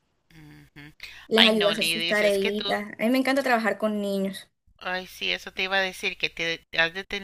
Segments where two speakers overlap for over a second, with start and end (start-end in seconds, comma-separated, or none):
1.4-2.8